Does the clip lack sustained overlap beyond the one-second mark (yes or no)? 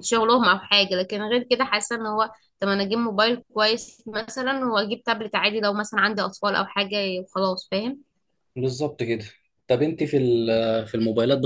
yes